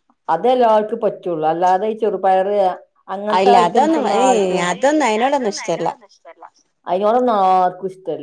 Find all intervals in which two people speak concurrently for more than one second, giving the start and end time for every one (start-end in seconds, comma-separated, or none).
3.4-5.9